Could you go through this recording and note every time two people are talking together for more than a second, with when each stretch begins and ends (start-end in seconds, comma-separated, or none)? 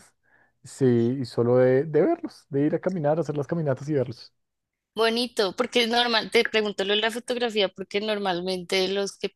none